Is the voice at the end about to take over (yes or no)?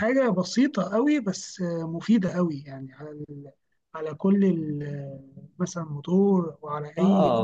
yes